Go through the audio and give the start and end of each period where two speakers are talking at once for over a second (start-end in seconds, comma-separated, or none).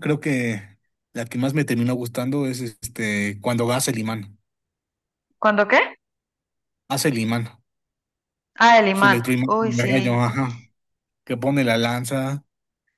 8.9-10.3